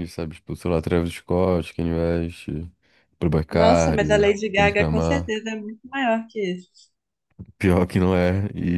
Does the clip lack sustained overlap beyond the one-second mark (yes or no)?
no